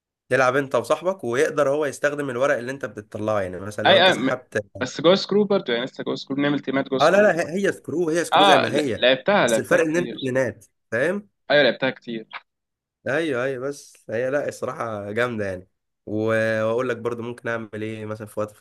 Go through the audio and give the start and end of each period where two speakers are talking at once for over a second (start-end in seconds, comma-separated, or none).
8.3-10.2